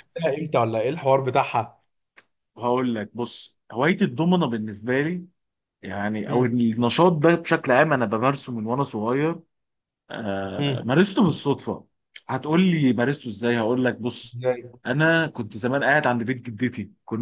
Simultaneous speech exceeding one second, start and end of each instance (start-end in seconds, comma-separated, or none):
none